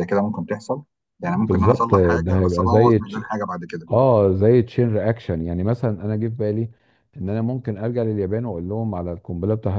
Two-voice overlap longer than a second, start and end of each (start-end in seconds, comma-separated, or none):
1.2-3.2